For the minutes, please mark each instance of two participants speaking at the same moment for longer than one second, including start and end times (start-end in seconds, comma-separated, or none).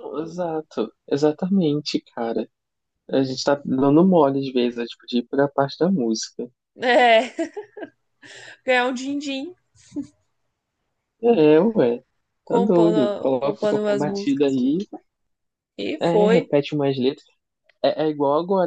12.5-14.6